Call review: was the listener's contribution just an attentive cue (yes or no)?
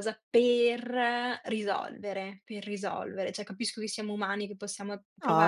no